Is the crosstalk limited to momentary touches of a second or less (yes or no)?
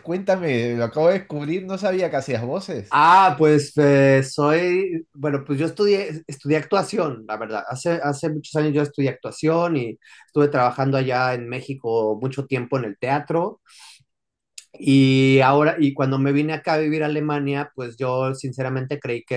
yes